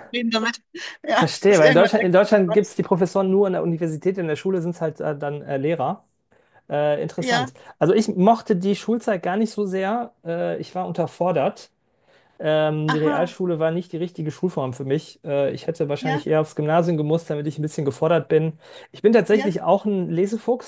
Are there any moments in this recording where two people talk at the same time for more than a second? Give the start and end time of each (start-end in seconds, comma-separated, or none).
1.1-2.8